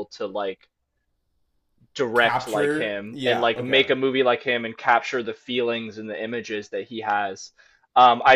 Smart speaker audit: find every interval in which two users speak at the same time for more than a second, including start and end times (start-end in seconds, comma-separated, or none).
2.1-3.9